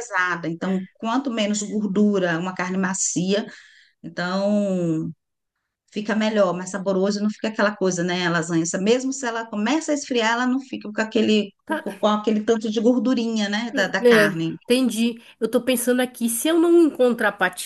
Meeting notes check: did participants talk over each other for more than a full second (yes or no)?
no